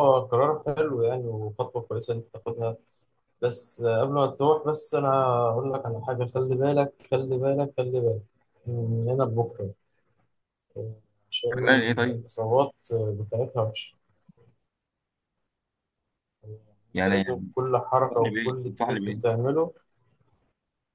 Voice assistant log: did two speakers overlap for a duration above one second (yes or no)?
yes